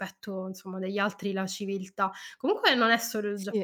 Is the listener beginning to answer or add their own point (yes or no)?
no